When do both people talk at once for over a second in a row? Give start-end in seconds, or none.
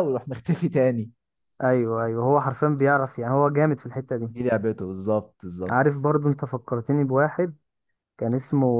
none